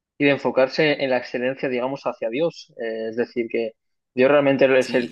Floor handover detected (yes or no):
no